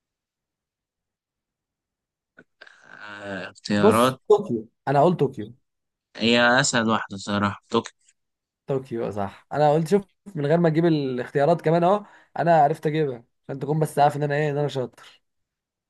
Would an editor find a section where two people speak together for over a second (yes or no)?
no